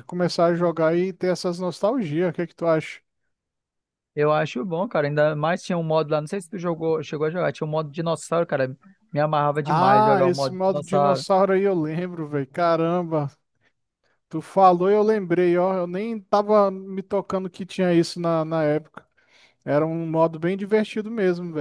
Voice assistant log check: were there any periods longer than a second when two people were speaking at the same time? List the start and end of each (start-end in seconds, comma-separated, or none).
9.6-11.3